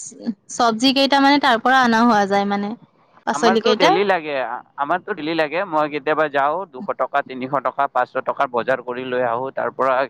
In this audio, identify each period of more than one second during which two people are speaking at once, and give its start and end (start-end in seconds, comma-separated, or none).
none